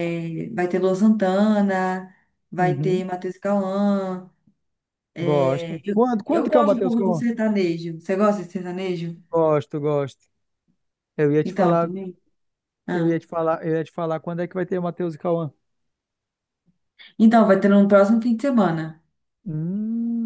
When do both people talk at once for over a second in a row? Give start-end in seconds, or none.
5.2-7.2